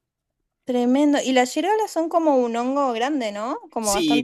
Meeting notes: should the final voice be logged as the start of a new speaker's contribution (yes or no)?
yes